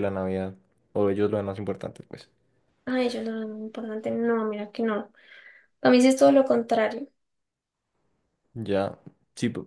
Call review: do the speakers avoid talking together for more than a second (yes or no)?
yes